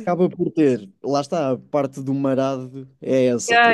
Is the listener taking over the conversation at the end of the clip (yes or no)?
yes